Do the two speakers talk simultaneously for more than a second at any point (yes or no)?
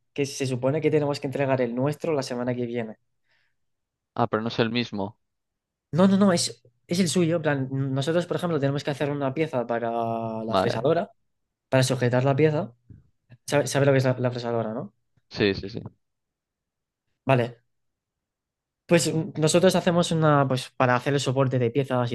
no